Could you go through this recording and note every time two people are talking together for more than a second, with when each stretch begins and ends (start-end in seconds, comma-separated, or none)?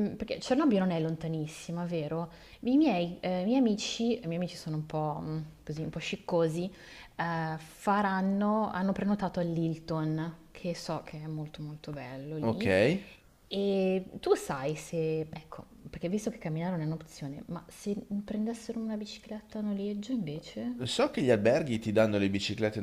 none